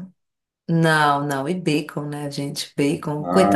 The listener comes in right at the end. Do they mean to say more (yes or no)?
no